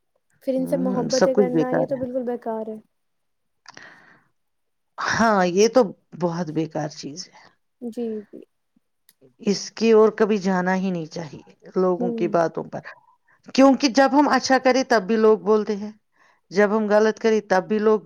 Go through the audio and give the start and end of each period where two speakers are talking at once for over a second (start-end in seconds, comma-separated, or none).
0.6-2.0